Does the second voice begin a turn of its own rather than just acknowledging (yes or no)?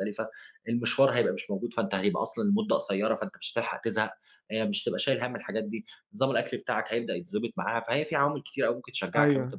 yes